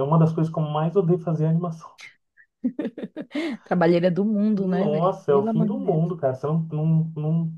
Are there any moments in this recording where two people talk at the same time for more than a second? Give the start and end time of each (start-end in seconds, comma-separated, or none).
4.6-6.0